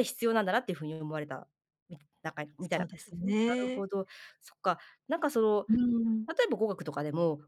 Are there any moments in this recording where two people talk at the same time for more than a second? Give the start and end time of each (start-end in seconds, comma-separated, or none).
2.6-3.9